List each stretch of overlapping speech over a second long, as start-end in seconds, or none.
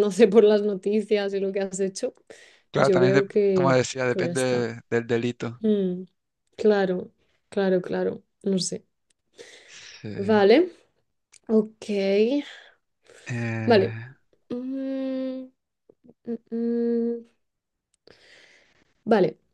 2.8-4.7